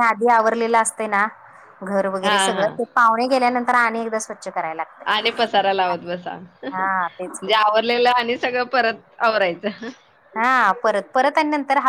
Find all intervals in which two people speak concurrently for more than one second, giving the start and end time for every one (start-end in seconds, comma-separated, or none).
none